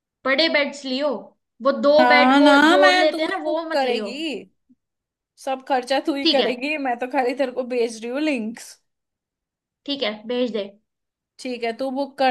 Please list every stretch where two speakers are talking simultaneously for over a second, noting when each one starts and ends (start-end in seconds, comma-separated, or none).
2.0-4.1